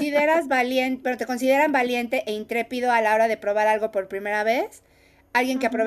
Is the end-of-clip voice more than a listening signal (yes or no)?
no